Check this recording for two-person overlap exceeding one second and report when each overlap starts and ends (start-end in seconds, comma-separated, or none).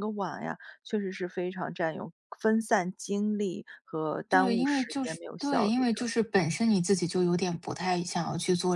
4.3-5.8